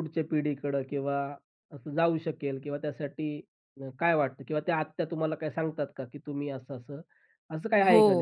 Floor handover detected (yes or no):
yes